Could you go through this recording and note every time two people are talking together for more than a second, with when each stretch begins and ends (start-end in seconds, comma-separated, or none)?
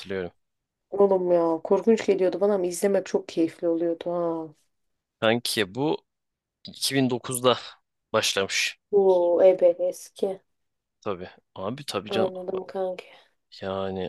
none